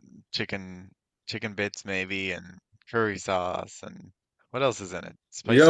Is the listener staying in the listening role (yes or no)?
no